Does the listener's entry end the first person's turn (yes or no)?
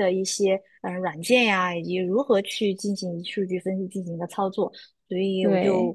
no